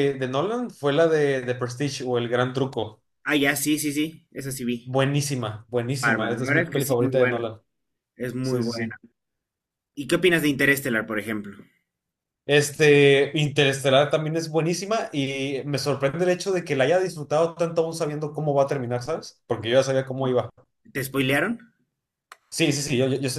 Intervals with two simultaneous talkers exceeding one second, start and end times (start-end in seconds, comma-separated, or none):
6.0-7.4